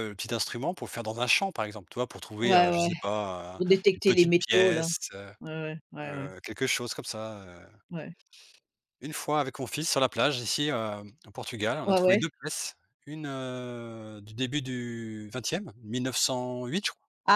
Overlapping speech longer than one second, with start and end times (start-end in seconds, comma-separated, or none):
3.6-4.9